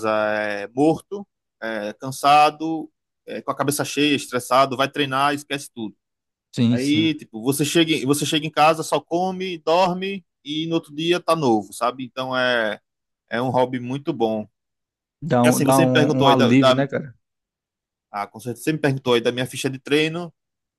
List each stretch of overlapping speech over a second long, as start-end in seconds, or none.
15.4-16.9